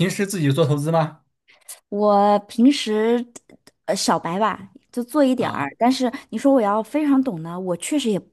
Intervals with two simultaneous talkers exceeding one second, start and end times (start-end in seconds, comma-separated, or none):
none